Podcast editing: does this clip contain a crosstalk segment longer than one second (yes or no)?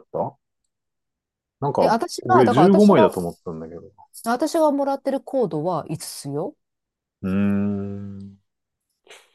yes